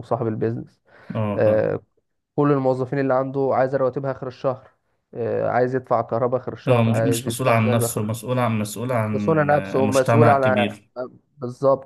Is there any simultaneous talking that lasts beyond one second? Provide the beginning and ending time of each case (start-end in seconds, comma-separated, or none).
6.7-8.2, 9.1-10.8